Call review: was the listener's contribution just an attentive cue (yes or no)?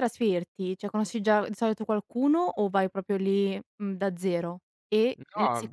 yes